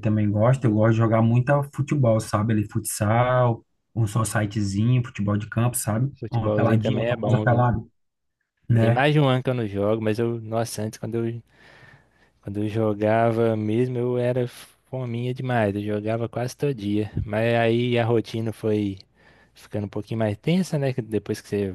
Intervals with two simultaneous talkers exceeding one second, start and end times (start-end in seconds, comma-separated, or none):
6.2-7.7